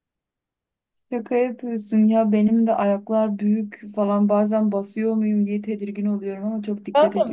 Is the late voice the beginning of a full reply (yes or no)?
yes